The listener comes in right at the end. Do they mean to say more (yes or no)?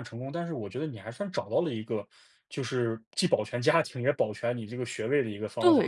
yes